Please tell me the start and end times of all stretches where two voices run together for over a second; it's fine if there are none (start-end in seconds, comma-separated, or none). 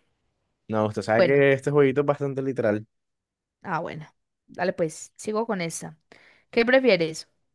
none